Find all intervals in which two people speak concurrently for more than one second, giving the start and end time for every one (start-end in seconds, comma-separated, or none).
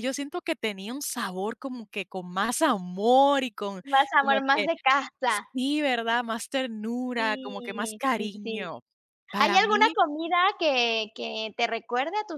7.2-8.7